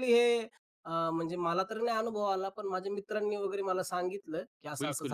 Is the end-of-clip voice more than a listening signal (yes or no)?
yes